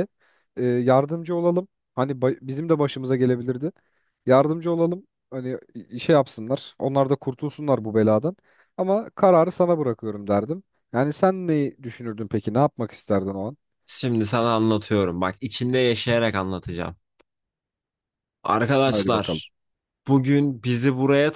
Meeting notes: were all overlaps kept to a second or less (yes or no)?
yes